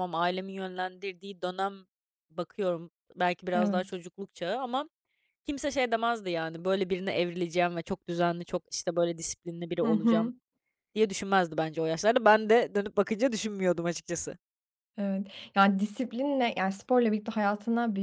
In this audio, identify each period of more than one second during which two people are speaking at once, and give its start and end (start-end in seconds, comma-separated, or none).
none